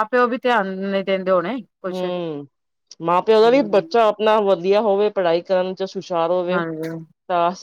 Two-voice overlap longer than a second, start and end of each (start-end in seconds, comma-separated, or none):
none